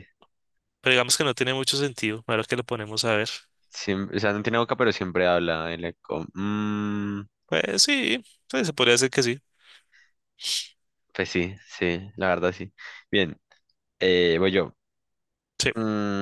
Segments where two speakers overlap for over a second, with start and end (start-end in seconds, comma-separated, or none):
none